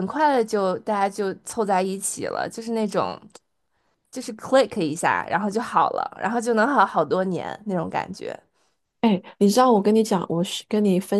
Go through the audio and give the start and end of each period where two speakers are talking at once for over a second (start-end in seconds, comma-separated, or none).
none